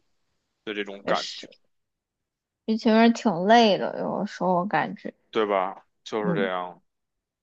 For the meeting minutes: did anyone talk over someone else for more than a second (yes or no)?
no